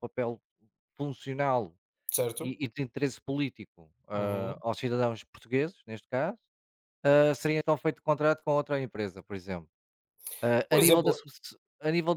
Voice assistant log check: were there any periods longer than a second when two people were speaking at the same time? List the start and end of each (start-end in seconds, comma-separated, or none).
none